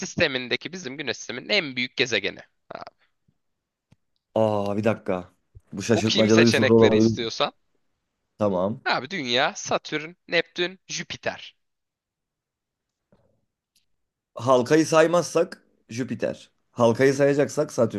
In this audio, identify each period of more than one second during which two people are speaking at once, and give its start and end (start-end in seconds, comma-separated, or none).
5.9-7.2